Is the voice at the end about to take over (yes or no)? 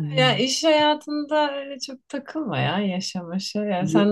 no